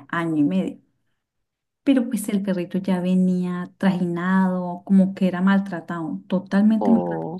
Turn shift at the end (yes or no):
no